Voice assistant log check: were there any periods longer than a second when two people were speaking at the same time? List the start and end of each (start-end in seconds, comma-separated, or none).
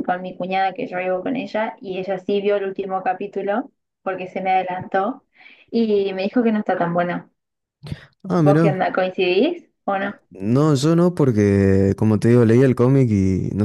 none